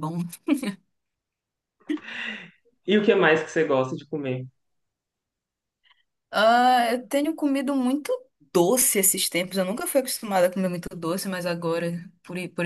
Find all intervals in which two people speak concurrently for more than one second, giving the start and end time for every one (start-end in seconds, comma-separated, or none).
none